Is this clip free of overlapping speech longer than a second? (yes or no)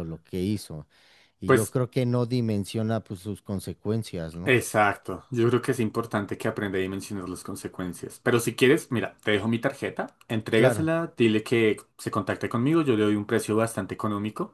yes